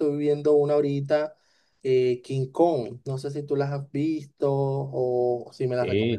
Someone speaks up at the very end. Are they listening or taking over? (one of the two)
taking over